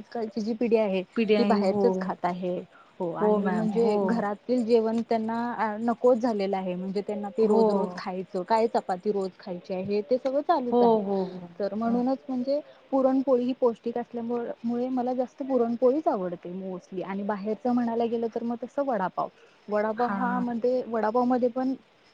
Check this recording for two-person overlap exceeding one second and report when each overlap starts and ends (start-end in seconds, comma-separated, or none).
none